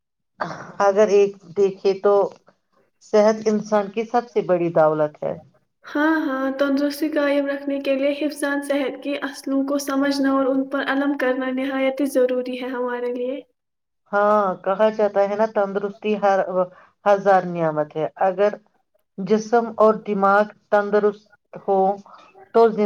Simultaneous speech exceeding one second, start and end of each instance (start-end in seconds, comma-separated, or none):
none